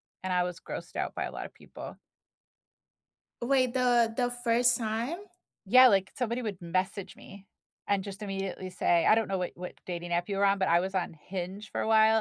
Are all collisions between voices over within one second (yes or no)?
yes